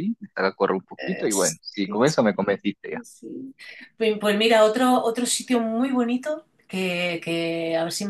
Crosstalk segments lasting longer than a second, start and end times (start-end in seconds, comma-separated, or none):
1.0-2.5